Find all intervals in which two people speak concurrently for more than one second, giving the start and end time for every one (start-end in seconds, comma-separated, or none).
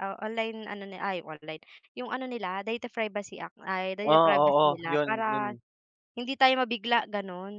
4.0-5.5